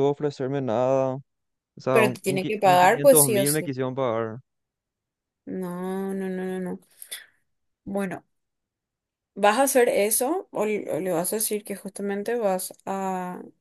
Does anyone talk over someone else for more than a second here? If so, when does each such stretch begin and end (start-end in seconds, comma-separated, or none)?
1.9-3.7